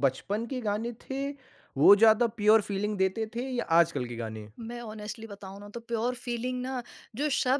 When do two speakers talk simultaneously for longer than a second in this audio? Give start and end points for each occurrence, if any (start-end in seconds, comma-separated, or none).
none